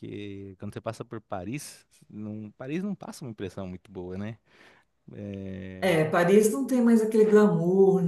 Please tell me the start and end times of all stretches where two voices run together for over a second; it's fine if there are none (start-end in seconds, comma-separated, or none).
none